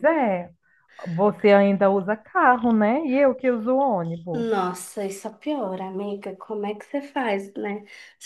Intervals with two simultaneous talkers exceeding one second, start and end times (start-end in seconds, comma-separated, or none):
none